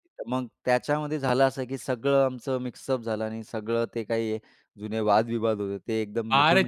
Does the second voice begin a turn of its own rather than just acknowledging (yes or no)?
yes